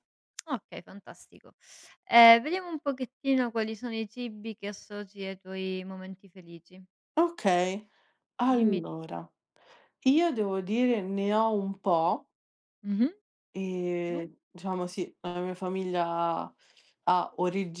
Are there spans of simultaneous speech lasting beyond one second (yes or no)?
no